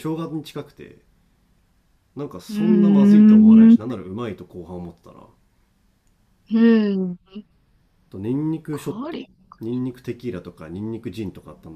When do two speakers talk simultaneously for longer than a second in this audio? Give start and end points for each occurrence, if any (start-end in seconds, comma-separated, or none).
2.5-3.8